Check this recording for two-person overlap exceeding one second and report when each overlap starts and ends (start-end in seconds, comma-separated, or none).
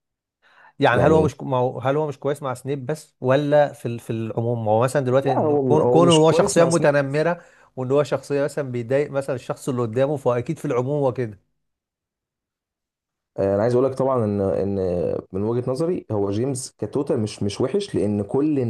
5.2-7.3